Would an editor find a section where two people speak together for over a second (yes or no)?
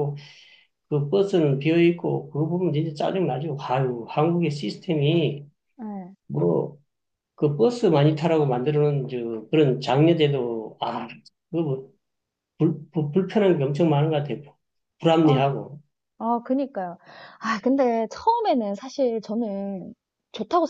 no